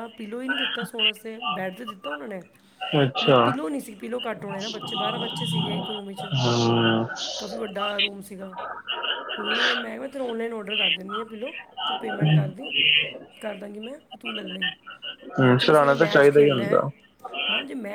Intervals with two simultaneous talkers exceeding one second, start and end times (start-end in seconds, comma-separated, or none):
15.4-16.8